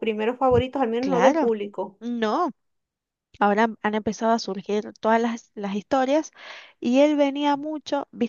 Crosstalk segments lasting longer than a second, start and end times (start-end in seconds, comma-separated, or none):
none